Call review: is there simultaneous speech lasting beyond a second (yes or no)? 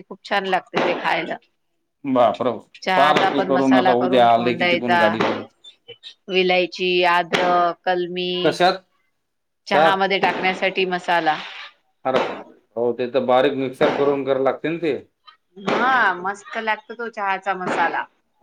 yes